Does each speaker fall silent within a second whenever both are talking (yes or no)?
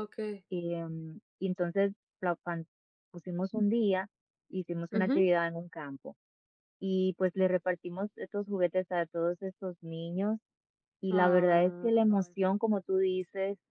no